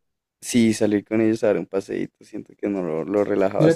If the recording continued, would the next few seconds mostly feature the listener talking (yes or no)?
yes